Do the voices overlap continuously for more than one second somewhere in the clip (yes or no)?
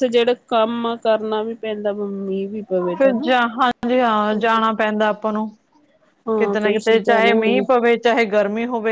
yes